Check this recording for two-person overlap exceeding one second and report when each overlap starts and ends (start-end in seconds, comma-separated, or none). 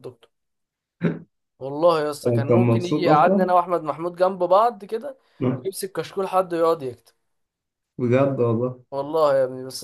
2.3-3.5